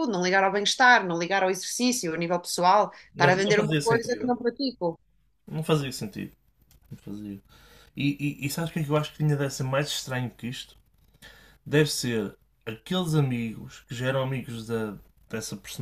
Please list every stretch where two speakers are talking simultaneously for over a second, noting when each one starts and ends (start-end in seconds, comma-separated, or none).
3.1-4.3